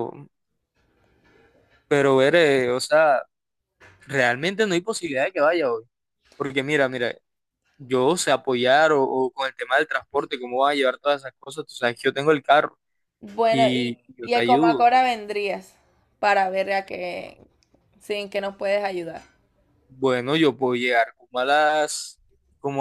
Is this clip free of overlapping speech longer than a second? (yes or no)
no